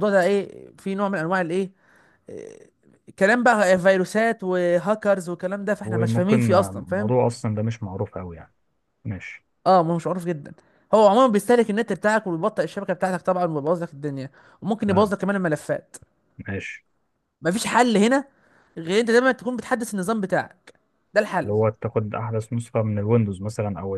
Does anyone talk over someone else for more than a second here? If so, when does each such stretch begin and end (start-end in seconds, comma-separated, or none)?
5.8-7.1